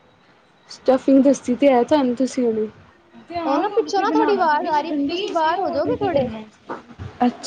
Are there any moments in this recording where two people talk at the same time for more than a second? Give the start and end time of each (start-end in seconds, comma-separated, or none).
3.5-6.3